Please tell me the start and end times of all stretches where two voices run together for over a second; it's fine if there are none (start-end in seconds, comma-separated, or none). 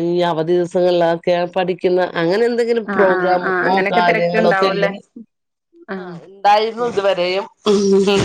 3.0-4.9